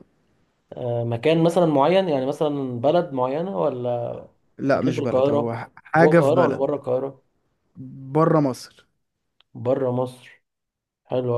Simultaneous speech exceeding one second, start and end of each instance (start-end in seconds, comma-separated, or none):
4.7-6.6